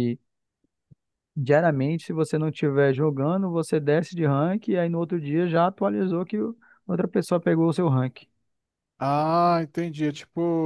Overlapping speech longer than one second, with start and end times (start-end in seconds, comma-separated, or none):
none